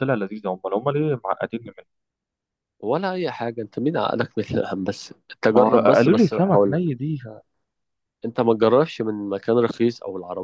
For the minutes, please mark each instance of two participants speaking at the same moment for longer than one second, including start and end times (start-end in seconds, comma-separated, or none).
5.5-6.8